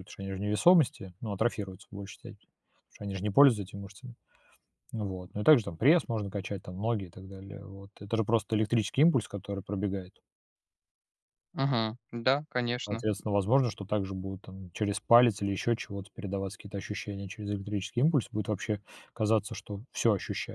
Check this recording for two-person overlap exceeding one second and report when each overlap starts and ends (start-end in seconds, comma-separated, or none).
none